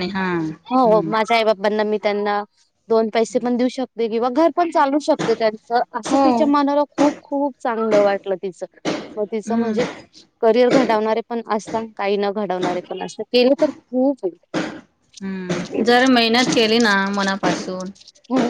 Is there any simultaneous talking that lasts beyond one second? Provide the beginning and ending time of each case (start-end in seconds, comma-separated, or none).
none